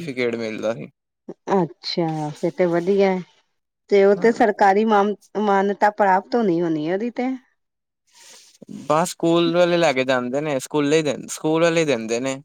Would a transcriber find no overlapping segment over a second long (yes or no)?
yes